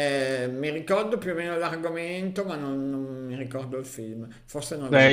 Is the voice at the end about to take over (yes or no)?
yes